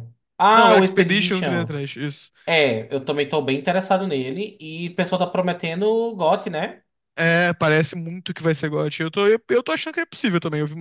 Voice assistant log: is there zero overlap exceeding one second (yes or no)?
no